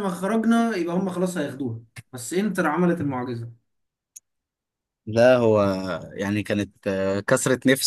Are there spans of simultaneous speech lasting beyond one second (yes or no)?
no